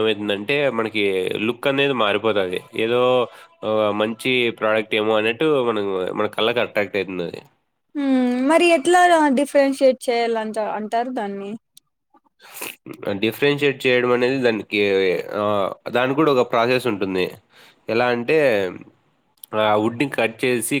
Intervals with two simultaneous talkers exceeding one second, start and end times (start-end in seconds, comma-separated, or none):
none